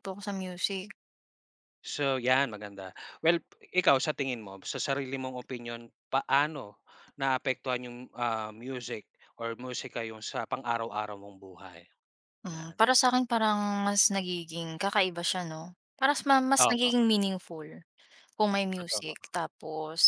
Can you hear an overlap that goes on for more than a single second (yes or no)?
no